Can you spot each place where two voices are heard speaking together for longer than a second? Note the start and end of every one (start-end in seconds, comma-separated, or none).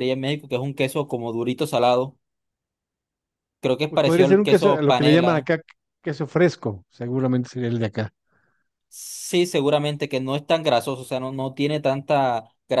3.9-5.5